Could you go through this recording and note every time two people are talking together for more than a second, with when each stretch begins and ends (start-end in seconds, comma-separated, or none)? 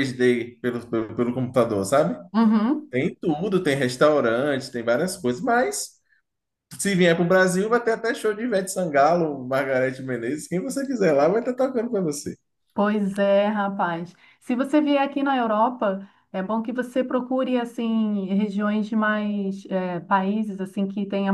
none